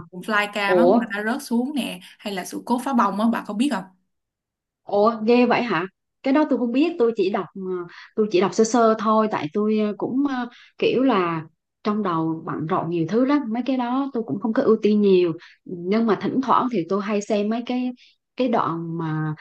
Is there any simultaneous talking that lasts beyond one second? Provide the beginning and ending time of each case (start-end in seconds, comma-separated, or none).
none